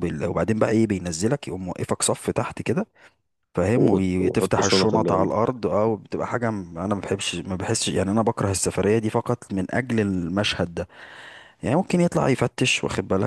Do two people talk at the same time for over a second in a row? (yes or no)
yes